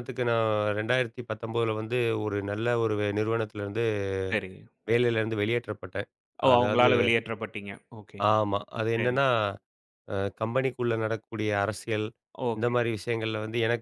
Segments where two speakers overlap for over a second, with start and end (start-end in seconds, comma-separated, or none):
none